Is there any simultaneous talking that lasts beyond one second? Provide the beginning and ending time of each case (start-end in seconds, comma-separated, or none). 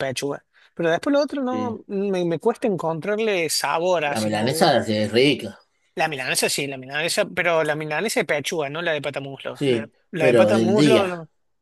9.5-11.1